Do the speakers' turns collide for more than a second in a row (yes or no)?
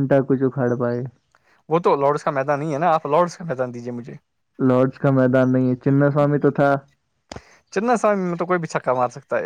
no